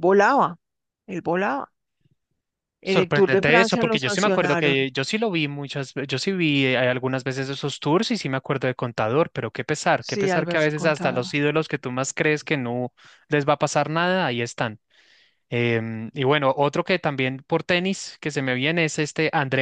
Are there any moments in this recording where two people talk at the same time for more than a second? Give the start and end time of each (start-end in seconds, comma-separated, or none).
2.8-4.8, 10.0-11.3